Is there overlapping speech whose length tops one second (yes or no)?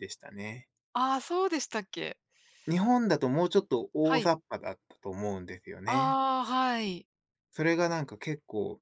no